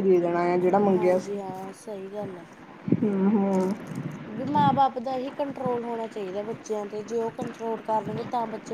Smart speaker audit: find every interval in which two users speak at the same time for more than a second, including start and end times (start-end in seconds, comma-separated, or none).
none